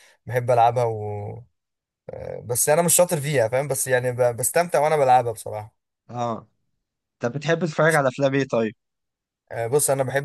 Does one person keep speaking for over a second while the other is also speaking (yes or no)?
no